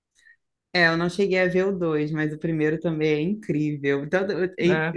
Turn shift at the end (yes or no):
no